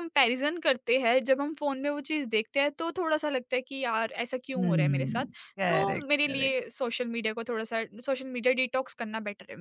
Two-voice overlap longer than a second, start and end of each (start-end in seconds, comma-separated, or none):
4.6-6.5